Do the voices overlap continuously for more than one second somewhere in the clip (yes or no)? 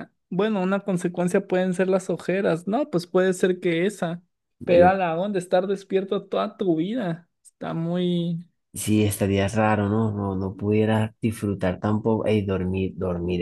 no